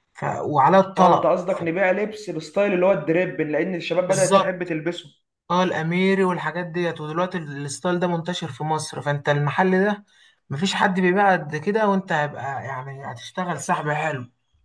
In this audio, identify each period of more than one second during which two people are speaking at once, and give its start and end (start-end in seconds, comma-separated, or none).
none